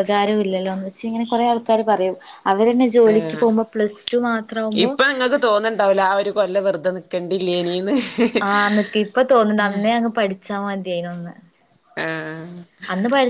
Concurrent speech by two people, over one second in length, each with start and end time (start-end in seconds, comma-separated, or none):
none